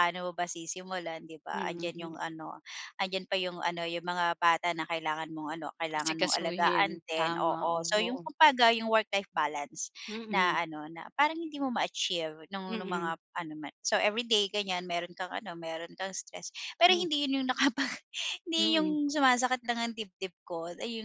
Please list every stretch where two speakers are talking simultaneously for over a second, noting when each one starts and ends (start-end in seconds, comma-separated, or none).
6.0-8.3